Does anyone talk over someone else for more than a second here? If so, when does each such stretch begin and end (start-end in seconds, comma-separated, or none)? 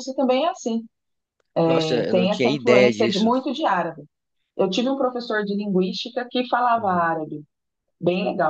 1.7-3.3